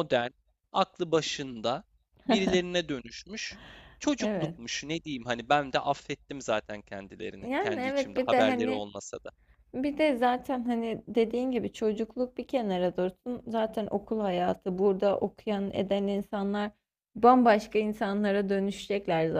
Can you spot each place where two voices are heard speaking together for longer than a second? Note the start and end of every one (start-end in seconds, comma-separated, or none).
7.4-8.9